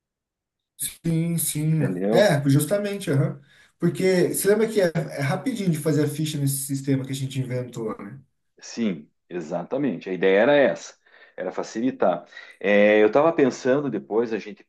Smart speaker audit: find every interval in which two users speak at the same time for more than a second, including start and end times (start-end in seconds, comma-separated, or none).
none